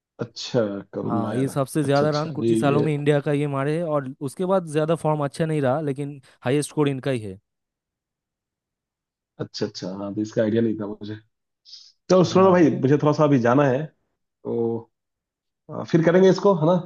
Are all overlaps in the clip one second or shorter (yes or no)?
no